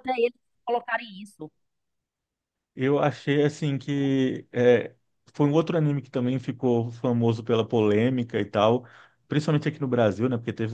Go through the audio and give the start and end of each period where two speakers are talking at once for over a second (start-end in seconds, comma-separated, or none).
none